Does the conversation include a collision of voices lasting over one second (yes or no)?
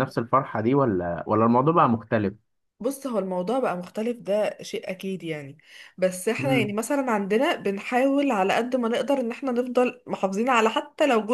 no